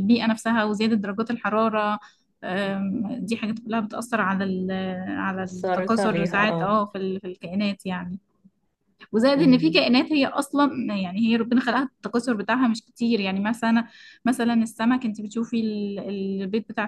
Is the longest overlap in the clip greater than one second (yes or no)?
yes